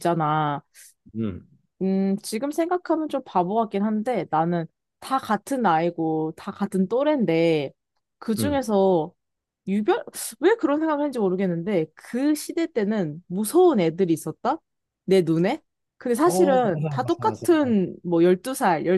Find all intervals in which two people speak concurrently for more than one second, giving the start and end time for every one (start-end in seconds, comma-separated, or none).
16.2-17.8